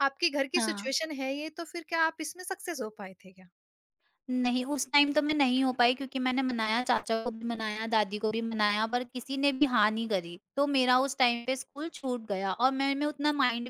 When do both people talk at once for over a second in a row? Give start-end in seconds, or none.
none